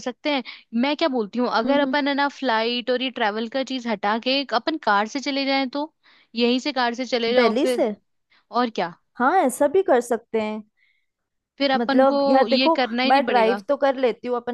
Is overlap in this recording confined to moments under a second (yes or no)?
no